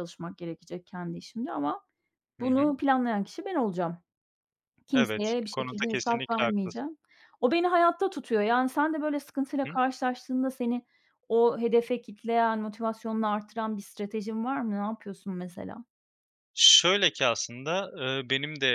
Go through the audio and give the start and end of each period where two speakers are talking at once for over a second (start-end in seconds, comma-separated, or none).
4.9-6.8